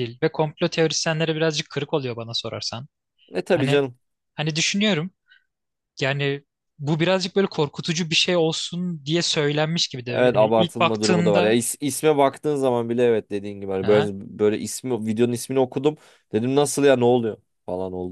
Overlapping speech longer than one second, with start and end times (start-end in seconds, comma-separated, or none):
10.1-11.6